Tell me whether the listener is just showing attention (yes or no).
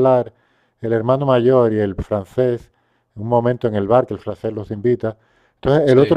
yes